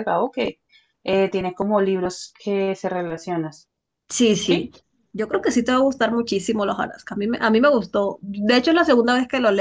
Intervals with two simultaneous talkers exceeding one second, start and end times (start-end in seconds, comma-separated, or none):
none